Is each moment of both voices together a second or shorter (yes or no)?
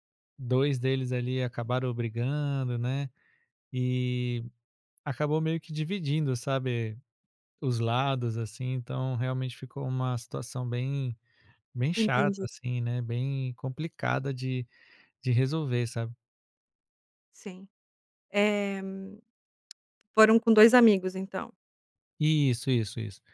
yes